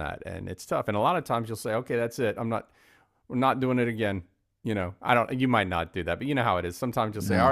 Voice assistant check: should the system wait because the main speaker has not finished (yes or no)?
yes